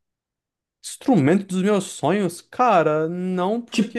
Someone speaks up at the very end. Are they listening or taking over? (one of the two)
listening